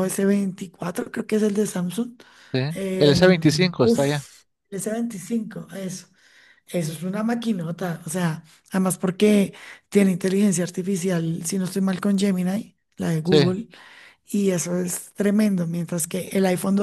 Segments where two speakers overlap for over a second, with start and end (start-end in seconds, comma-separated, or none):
3.0-4.3